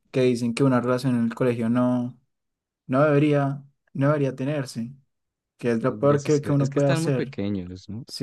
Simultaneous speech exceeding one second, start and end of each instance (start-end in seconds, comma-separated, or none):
5.8-7.3